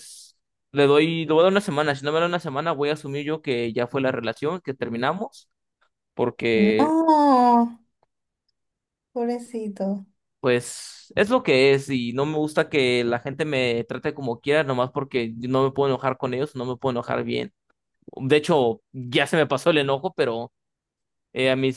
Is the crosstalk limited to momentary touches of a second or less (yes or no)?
yes